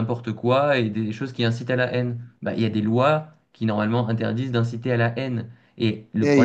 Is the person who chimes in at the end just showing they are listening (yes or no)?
no